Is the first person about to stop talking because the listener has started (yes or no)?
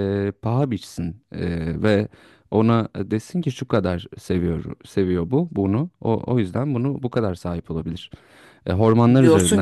yes